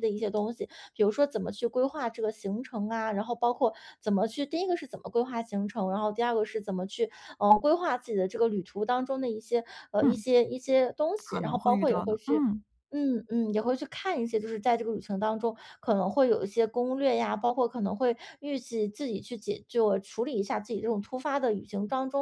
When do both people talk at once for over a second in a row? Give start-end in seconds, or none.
11.2-12.4